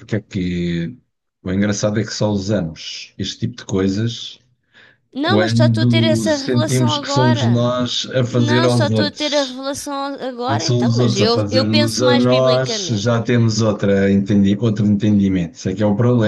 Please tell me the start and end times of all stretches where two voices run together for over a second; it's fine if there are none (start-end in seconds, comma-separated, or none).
5.2-7.7, 8.3-9.6, 10.5-13.1